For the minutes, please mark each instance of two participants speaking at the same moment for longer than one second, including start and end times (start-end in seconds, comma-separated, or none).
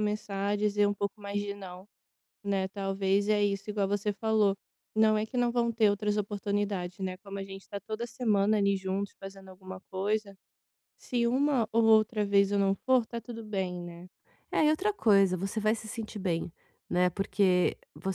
none